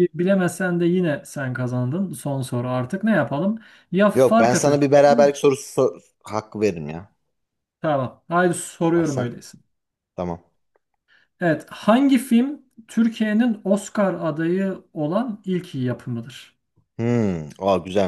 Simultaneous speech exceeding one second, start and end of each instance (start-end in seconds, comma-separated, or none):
4.1-5.3